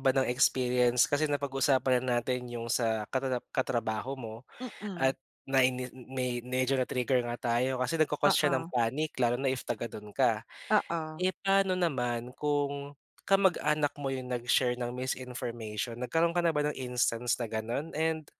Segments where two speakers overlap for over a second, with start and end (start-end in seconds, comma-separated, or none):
none